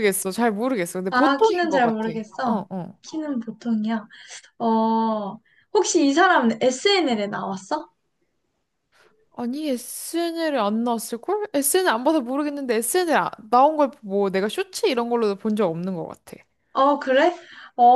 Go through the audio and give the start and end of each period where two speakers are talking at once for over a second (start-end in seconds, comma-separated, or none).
1.1-2.6